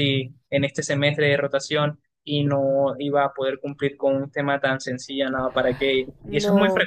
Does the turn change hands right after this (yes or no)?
yes